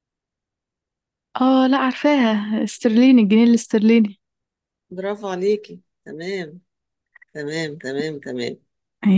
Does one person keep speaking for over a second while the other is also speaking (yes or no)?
no